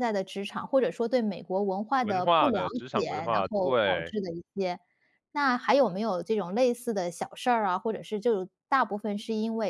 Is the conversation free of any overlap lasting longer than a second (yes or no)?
no